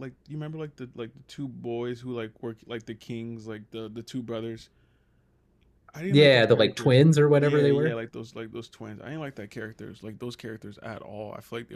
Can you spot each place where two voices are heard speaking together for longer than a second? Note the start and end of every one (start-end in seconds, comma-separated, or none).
6.1-8.0